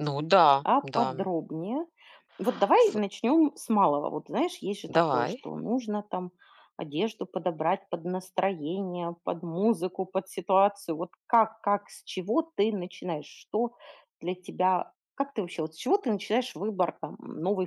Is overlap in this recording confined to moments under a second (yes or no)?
yes